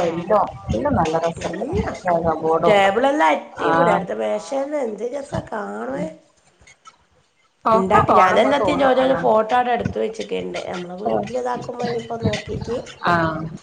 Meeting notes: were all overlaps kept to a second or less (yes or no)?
no